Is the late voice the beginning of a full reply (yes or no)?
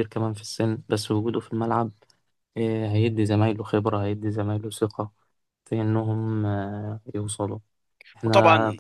no